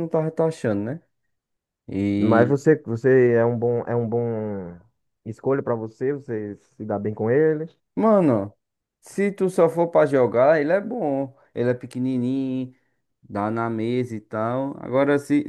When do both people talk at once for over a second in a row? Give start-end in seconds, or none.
none